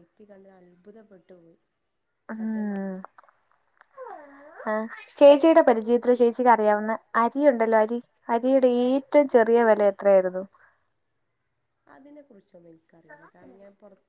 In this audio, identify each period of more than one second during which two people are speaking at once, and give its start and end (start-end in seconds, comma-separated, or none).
none